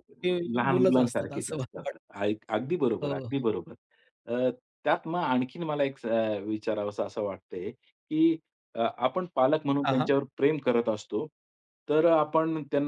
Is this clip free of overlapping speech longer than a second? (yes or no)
no